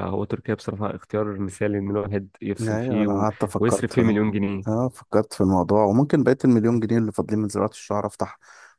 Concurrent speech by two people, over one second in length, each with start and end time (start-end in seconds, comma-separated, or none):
2.6-4.1